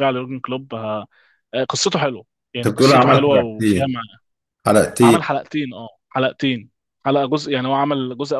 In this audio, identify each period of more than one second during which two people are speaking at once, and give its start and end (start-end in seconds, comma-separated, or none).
2.6-4.0